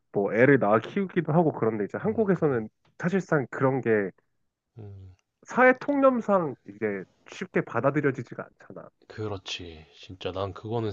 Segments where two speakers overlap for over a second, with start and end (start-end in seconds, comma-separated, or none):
none